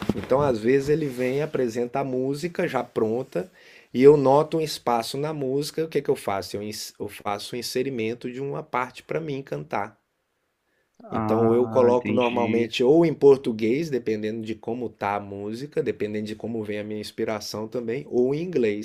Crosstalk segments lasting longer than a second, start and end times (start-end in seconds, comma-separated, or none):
11.2-12.7